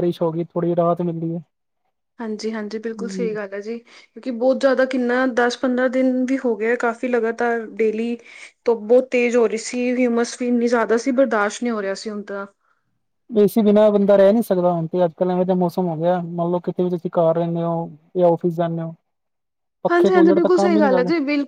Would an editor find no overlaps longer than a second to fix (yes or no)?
yes